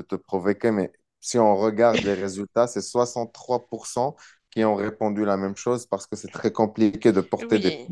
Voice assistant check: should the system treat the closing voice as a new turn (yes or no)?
no